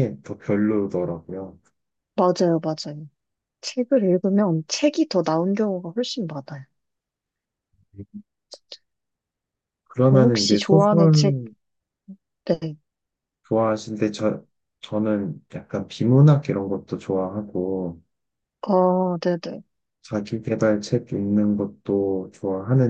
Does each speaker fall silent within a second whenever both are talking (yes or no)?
no